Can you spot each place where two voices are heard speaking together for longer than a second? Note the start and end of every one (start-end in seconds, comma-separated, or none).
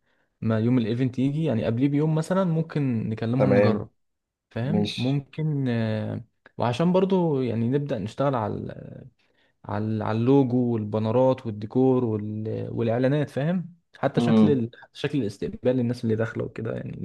none